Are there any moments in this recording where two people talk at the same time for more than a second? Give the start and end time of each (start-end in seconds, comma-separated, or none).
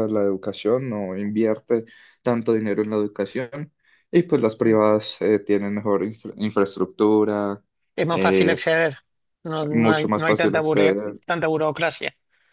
9.7-11.2